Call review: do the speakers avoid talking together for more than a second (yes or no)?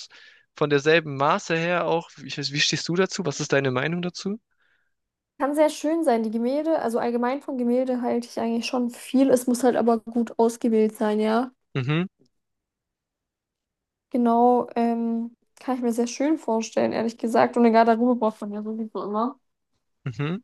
yes